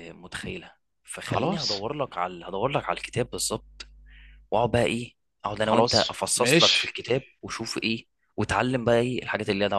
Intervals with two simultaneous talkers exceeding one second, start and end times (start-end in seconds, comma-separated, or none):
5.7-7.0